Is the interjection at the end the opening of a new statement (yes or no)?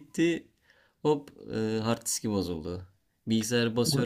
no